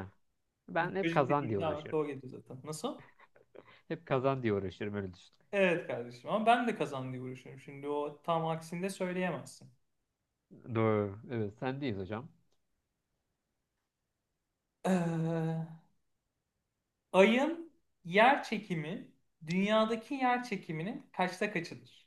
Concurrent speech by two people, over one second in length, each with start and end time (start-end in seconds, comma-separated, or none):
0.8-2.0